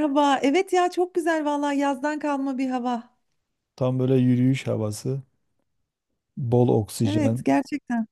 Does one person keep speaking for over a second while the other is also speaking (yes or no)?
no